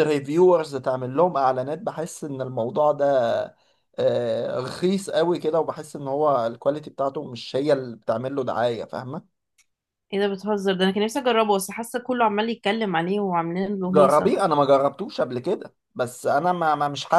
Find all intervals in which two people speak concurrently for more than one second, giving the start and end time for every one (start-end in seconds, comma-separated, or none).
none